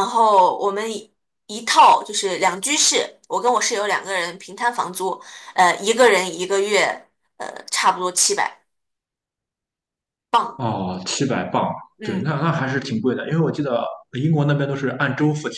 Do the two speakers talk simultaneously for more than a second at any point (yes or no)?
no